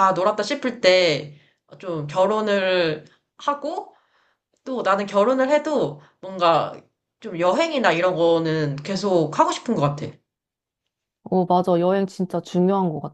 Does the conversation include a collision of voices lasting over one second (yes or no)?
no